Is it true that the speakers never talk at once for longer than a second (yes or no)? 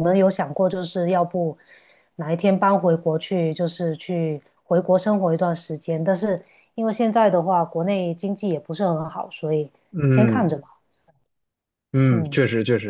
yes